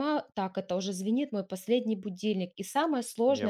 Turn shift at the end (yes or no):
no